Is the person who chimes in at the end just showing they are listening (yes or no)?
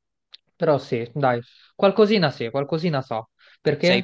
no